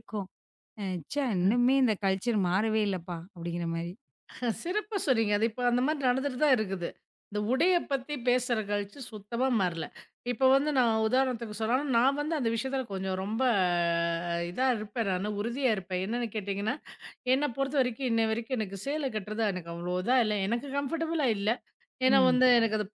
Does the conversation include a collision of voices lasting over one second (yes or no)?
no